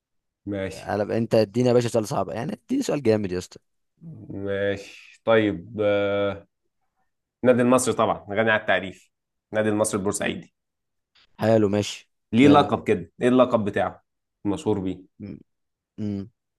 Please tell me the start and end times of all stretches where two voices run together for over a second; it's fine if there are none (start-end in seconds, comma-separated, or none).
none